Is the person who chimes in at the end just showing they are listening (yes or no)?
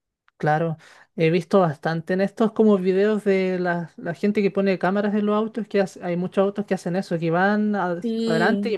yes